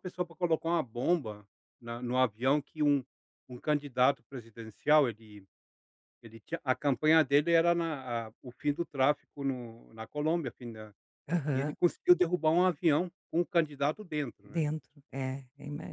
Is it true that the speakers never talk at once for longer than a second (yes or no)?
yes